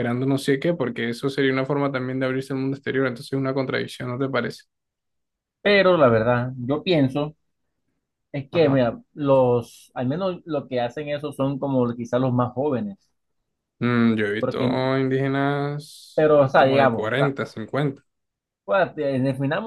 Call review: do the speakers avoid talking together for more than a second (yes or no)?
no